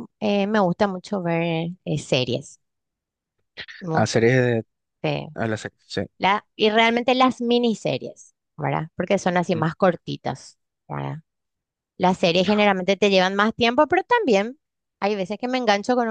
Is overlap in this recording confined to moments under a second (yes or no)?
yes